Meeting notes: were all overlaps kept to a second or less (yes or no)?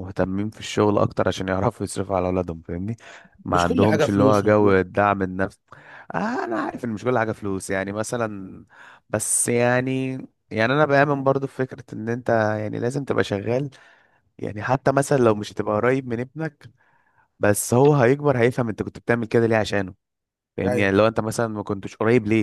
no